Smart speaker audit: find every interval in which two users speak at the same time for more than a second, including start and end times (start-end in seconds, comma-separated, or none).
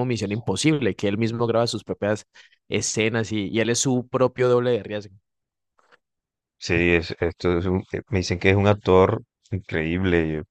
none